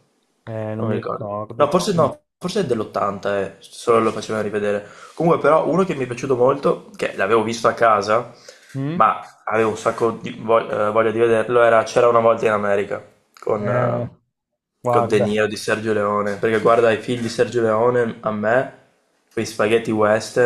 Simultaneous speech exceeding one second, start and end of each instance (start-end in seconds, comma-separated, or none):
0.8-2.1